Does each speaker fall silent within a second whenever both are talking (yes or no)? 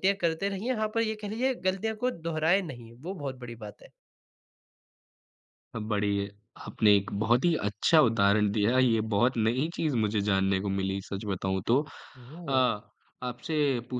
yes